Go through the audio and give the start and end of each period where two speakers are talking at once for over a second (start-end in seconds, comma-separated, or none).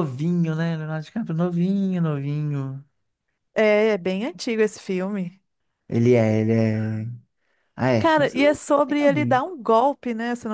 8.0-9.4